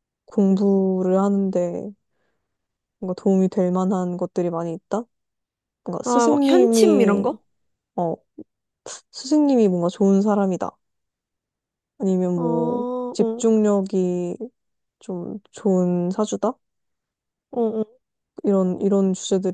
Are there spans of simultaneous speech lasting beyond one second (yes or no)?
yes